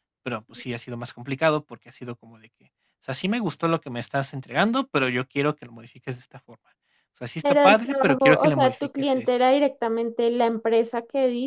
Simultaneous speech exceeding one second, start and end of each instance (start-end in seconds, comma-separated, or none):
7.4-9.4